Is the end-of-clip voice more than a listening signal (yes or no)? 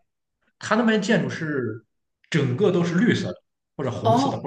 yes